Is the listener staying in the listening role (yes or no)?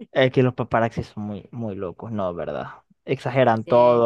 yes